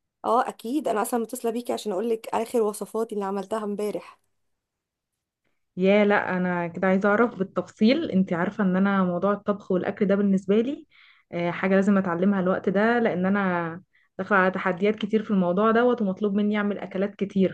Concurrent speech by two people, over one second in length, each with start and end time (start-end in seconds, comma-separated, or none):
none